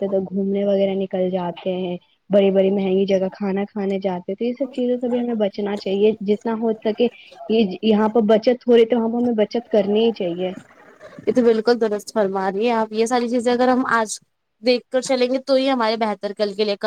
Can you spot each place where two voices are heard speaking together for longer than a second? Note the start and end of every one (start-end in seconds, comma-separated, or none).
none